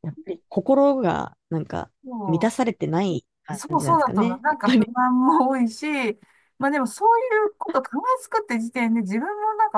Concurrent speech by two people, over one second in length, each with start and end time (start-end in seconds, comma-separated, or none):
3.5-4.9